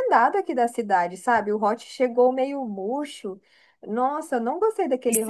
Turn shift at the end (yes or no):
yes